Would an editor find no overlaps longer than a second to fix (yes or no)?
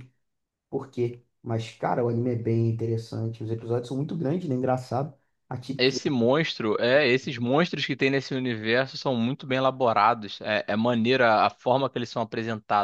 yes